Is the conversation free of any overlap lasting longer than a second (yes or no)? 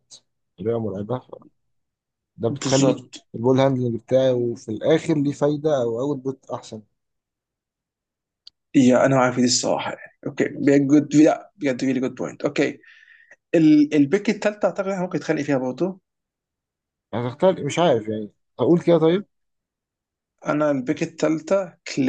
yes